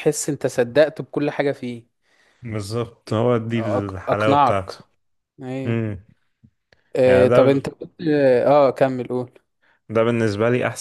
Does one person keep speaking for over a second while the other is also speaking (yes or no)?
yes